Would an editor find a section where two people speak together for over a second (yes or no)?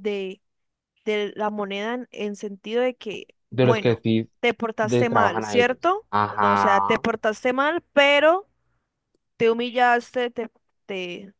yes